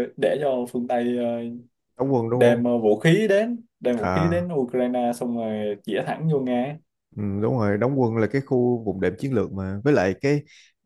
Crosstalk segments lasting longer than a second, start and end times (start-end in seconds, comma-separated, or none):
none